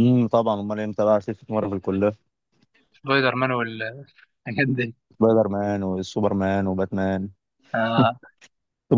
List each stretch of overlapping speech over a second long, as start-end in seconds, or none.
none